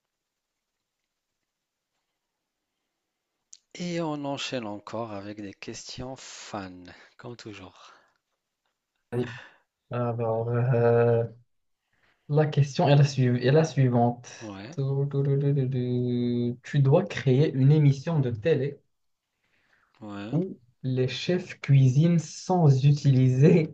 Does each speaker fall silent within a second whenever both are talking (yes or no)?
yes